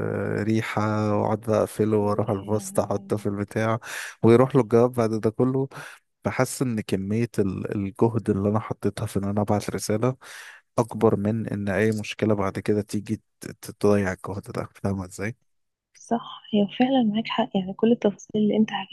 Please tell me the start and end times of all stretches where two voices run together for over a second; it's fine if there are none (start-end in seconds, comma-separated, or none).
2.0-3.3